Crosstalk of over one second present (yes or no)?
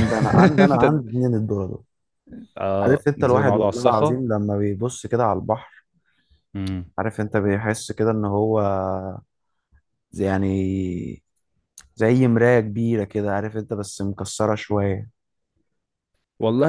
yes